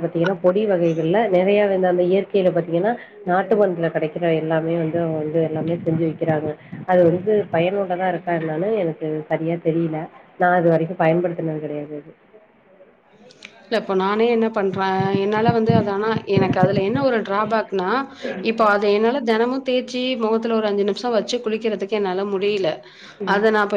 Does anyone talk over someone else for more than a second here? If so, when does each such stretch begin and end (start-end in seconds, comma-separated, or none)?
none